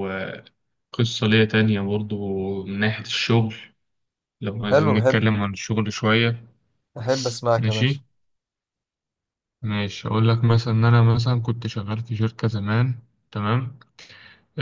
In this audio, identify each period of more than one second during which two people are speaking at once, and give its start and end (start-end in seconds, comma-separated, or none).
none